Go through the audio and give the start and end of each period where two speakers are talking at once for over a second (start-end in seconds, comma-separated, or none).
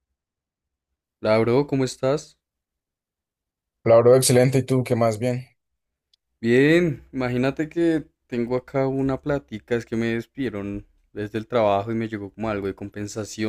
none